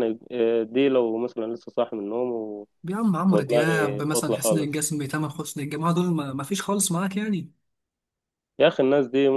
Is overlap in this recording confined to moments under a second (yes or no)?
no